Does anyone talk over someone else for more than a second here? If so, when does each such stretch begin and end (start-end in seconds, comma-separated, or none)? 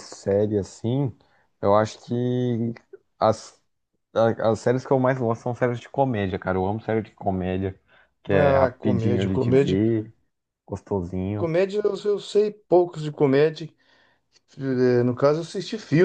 8.3-9.8